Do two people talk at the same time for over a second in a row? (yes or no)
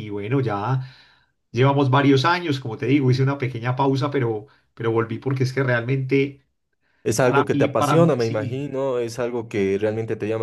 yes